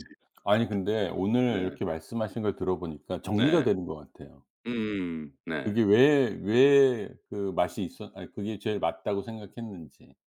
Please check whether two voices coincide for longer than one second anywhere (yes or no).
no